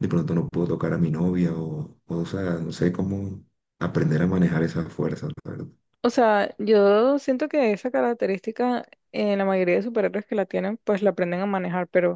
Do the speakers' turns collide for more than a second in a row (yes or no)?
no